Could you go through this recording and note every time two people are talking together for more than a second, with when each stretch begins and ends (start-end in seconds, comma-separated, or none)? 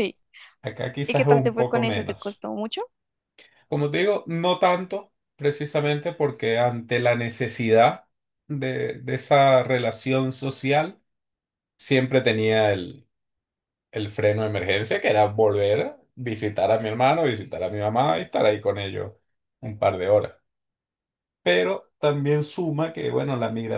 1.1-2.4